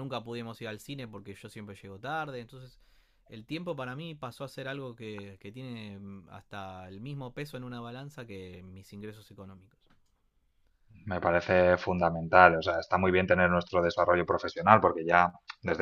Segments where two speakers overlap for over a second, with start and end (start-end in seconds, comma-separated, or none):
none